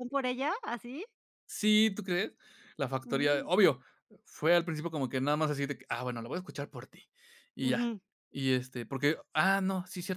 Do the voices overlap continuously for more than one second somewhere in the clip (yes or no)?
no